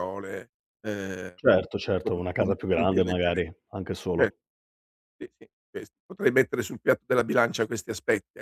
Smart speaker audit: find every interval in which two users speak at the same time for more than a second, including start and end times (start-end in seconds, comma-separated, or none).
2.0-3.4